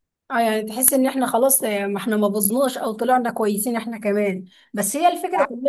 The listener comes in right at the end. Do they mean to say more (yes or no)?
no